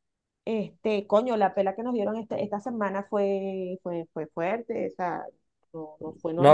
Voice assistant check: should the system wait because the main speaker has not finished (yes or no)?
no